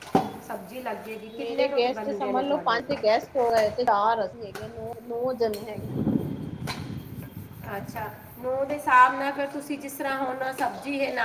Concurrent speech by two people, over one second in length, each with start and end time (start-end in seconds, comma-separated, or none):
1.4-3.0